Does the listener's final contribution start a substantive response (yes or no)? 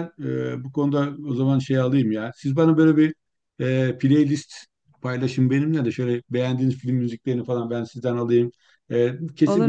no